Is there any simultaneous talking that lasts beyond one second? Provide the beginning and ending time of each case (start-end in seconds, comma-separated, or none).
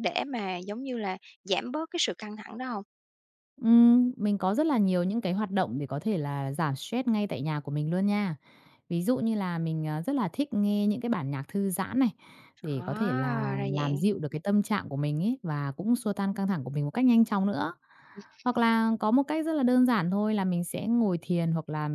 12.6-14.0